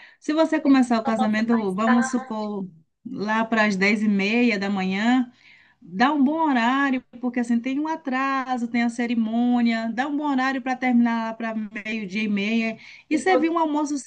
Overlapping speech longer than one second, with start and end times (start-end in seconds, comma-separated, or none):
0.5-2.3